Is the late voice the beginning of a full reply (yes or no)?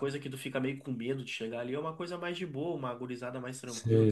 yes